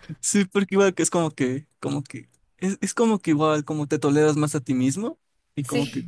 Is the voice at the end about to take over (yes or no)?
no